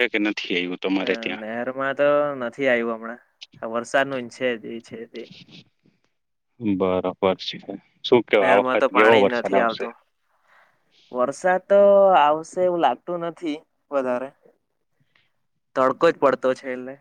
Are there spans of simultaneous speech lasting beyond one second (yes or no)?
yes